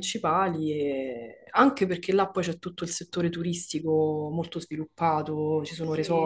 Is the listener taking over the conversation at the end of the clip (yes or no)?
yes